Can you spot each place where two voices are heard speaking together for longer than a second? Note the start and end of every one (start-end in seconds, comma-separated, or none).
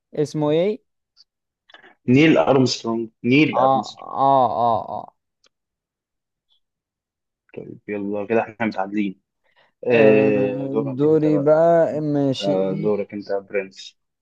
9.9-11.6